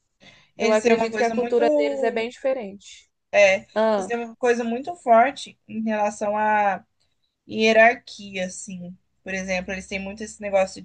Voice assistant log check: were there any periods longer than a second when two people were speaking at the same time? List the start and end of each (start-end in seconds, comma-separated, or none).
0.6-2.3